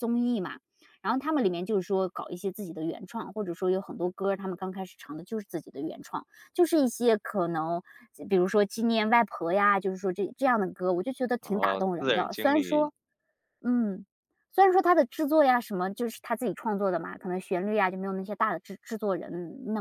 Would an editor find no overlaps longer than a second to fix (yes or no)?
no